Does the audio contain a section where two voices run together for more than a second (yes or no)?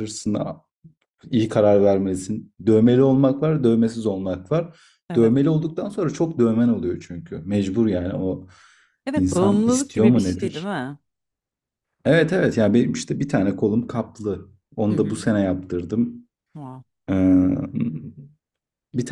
yes